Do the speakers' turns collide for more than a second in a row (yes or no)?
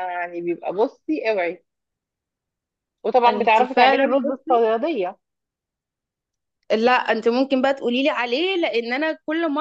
yes